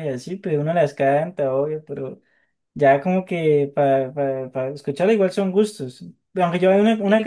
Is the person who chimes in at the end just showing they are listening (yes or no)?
yes